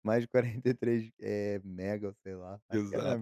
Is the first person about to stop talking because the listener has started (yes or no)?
yes